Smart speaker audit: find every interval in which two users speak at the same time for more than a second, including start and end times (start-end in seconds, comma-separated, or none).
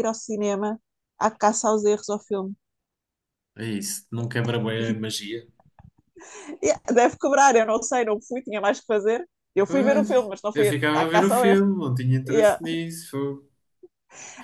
9.7-11.6